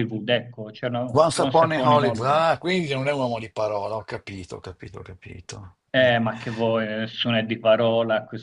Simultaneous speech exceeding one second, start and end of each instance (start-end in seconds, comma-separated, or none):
1.1-2.4